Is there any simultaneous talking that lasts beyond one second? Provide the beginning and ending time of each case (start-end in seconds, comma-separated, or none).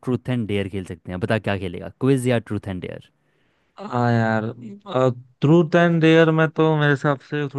none